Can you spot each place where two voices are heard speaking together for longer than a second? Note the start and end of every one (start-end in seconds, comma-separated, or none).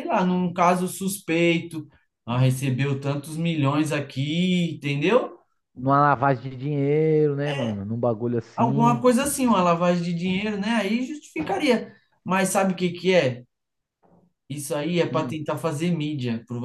none